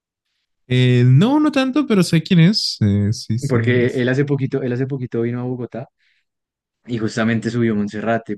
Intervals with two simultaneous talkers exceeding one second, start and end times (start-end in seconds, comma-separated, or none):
none